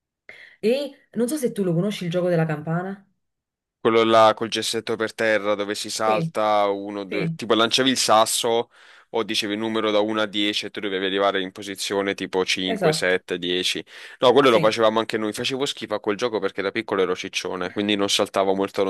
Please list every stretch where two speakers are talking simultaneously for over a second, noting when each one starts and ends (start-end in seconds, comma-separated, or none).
none